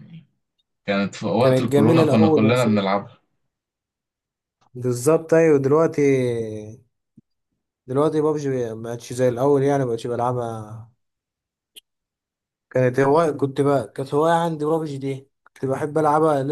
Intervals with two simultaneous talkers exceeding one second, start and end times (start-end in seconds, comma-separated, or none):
1.4-2.7